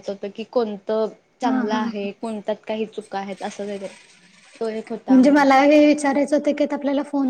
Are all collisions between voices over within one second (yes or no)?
yes